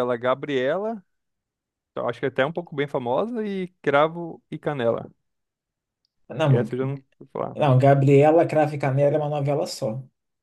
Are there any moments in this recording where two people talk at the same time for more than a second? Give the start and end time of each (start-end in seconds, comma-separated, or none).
none